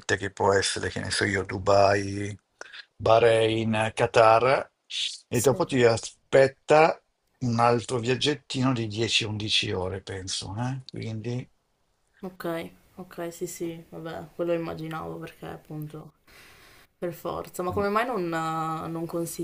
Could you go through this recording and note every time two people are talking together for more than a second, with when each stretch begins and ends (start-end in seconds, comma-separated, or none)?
none